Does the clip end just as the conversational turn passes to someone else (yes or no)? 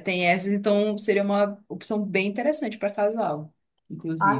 yes